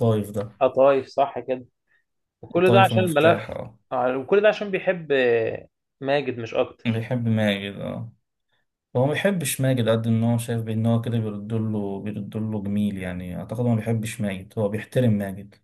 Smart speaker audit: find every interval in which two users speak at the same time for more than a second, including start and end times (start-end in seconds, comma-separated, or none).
2.5-3.8